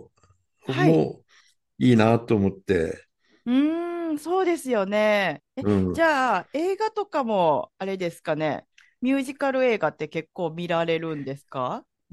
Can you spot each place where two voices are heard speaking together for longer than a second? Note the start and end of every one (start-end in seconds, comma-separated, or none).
none